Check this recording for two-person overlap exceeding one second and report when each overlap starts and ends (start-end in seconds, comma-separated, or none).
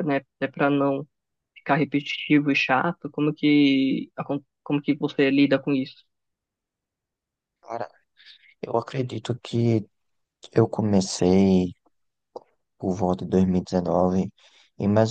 none